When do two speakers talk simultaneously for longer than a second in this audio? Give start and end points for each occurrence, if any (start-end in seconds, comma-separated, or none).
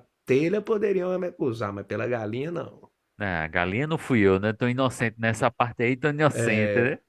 none